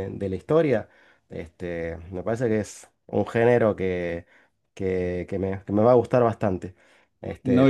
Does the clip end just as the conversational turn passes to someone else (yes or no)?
yes